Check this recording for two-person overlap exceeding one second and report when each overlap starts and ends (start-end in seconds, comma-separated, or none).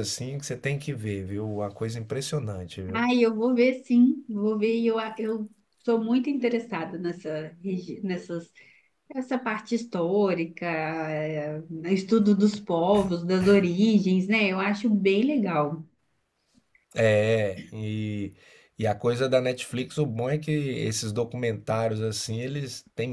none